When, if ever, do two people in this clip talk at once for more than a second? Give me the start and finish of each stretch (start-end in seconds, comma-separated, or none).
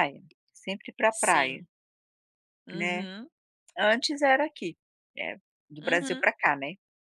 none